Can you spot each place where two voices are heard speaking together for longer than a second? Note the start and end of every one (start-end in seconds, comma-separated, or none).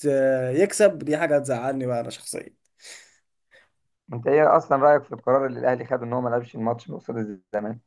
none